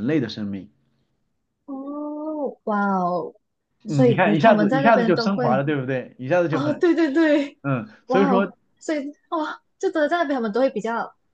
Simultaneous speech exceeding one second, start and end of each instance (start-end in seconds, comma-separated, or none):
3.9-5.7